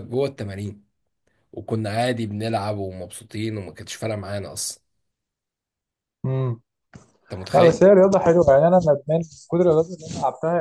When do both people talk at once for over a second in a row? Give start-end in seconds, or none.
none